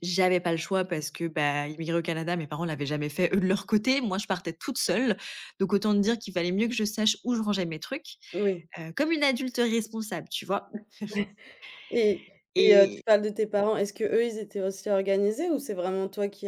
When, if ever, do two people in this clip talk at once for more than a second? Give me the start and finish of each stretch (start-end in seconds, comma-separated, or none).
none